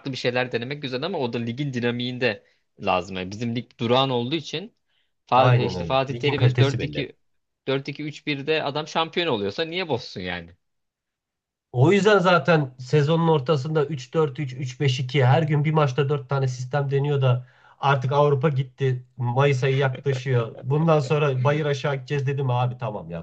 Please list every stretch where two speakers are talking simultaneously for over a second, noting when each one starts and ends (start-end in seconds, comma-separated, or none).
5.4-7.1